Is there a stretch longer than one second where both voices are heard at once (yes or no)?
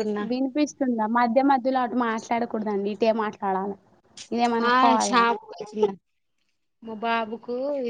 no